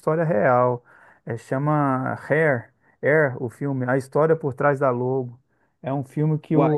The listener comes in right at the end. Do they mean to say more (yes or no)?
no